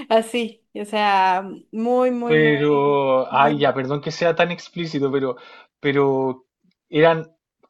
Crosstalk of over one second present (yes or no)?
no